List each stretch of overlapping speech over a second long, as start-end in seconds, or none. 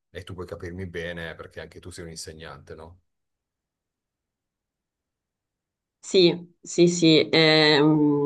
none